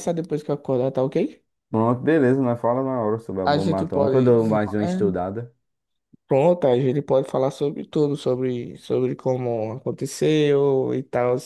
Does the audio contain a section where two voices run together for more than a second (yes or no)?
yes